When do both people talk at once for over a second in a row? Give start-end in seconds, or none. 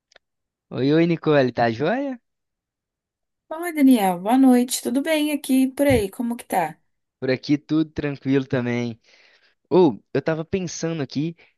none